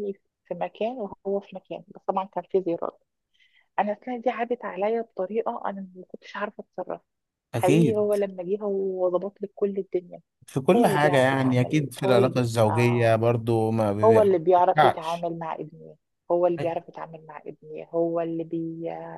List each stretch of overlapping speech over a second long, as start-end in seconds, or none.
10.7-13.2, 14.0-15.3